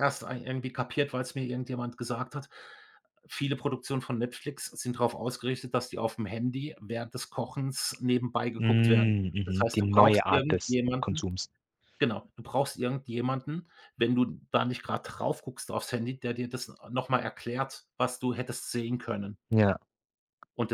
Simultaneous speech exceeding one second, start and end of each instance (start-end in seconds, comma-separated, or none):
8.6-11.2